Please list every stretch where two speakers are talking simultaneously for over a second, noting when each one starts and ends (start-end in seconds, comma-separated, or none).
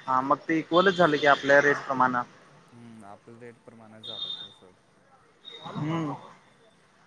none